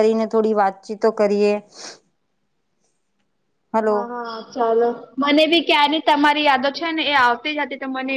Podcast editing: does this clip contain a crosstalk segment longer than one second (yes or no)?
no